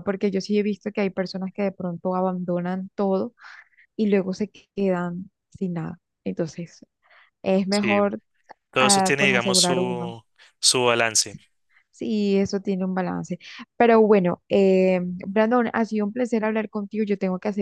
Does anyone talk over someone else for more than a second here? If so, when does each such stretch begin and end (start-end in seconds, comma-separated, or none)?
8.8-10.1